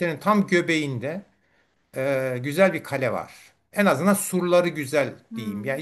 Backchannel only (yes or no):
yes